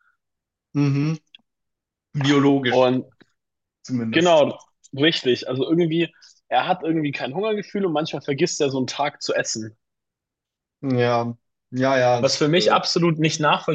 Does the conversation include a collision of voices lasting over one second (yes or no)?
no